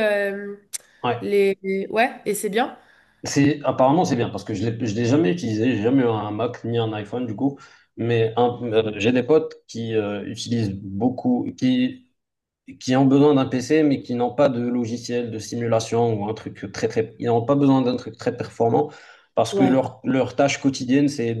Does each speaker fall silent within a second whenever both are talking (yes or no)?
yes